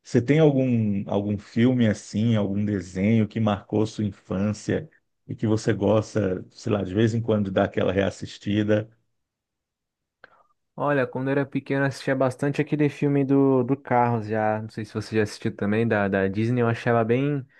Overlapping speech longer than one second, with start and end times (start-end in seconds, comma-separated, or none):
none